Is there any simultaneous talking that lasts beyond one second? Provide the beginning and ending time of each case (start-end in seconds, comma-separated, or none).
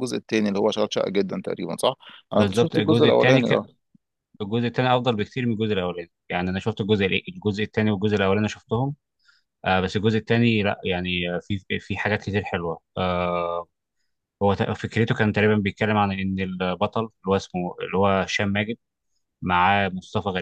2.3-3.6